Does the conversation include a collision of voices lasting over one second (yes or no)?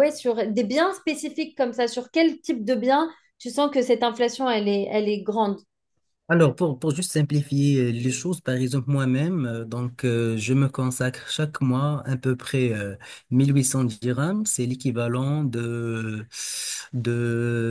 no